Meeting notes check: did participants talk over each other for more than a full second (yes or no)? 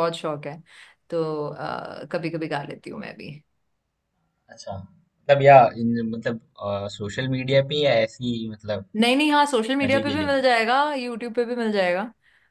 no